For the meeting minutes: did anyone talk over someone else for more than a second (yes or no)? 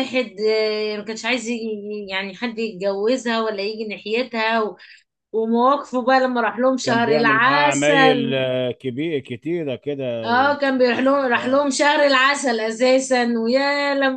yes